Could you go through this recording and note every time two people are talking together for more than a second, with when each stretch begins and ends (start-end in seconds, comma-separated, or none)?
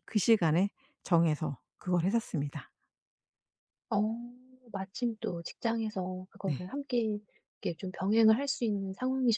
none